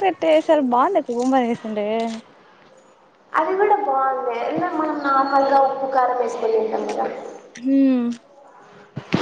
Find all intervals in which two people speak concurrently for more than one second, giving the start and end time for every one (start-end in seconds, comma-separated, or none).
none